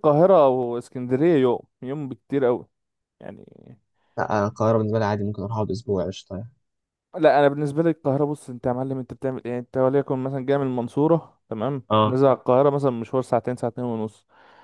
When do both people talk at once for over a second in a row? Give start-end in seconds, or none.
none